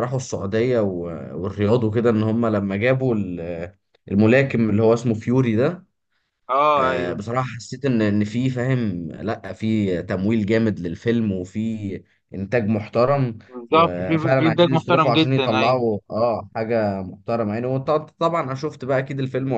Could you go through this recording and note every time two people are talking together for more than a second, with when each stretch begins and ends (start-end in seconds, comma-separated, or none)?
13.5-15.8